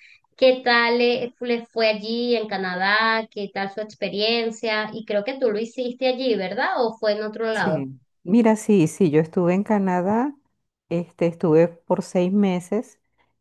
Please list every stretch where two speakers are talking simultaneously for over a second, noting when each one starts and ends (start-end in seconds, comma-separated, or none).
none